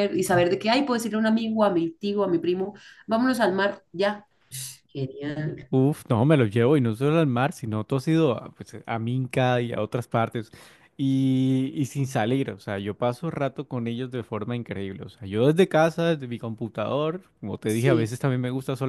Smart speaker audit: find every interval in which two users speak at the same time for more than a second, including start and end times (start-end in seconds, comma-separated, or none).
none